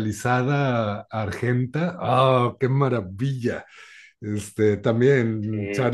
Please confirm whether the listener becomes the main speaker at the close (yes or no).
no